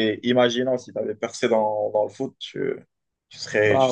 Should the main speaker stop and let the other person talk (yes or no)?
no